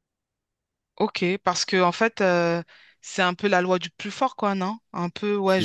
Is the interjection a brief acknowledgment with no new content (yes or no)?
yes